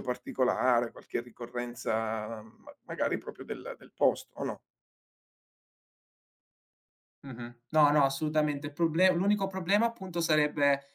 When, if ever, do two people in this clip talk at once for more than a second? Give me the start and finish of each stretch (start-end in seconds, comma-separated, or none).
none